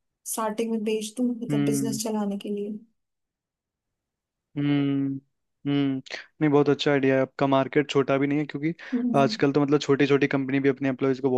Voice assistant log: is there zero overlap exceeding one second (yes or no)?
yes